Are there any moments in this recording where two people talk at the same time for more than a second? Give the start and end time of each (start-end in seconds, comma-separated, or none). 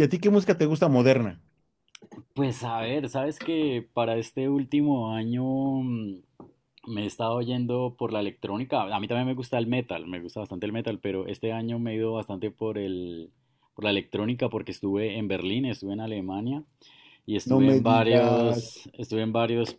17.4-18.8